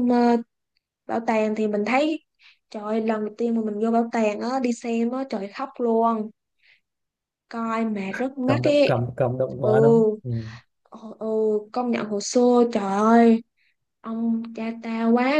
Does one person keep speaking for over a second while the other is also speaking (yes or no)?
no